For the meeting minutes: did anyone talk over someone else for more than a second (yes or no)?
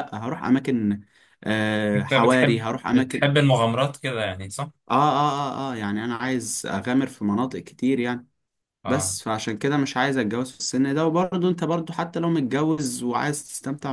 yes